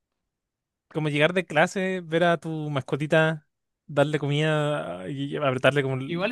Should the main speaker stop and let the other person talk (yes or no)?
yes